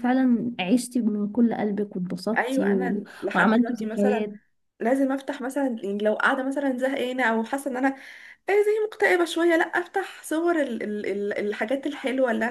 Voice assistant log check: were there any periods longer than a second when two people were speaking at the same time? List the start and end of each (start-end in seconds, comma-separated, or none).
2.4-4.3